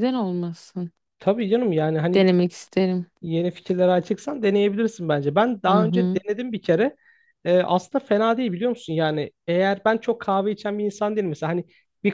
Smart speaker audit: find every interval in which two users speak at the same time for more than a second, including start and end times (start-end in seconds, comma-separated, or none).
none